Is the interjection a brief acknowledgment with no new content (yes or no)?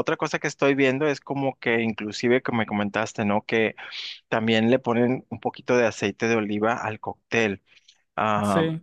yes